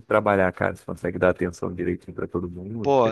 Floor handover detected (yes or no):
yes